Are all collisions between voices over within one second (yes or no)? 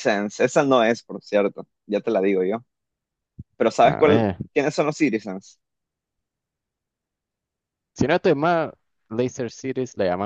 yes